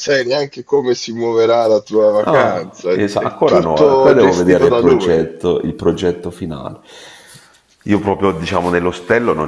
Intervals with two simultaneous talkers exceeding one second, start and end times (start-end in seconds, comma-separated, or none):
2.2-5.3